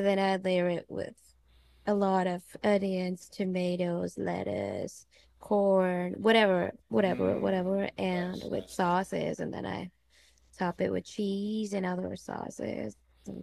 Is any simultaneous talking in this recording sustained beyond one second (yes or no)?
yes